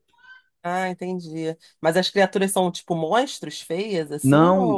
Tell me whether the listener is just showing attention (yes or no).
no